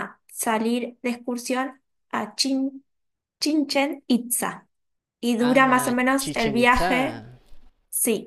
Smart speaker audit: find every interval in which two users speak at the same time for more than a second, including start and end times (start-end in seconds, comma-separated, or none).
5.4-7.2